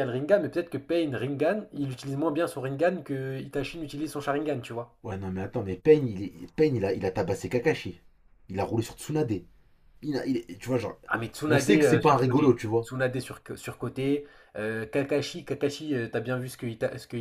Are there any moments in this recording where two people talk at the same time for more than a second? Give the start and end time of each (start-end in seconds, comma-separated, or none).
11.5-12.9